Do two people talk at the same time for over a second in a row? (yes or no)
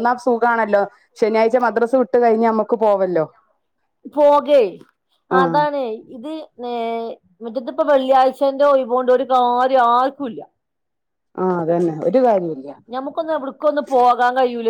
no